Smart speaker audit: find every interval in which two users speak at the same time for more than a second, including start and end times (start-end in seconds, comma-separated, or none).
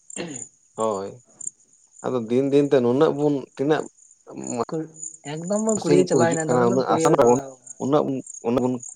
5.8-7.4